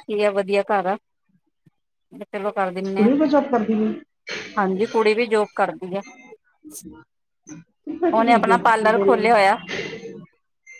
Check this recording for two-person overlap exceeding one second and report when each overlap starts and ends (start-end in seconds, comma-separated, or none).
8.1-9.6